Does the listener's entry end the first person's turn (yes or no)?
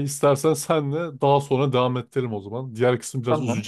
no